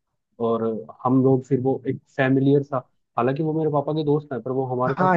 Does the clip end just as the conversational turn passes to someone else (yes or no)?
yes